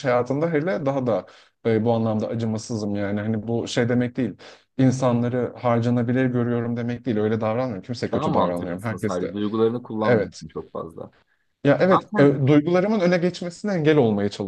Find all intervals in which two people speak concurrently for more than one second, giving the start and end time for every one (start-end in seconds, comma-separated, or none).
8.1-9.4